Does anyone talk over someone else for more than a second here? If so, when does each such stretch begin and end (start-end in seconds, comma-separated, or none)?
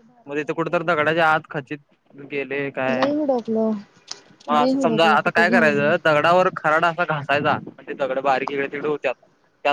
4.6-5.9